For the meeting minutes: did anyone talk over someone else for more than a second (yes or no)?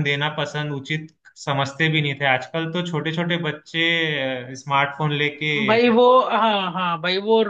no